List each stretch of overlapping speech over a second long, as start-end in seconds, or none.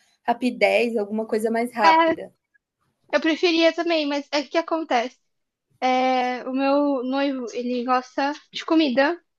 none